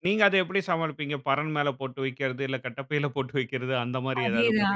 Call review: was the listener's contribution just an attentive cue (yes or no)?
no